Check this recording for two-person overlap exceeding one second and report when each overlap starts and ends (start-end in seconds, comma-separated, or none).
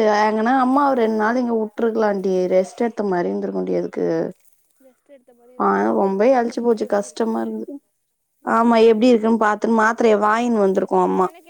5.6-7.5